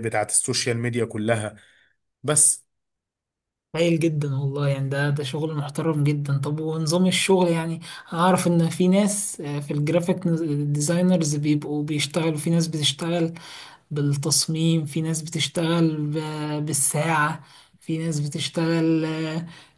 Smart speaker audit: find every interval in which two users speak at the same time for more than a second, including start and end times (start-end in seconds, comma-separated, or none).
none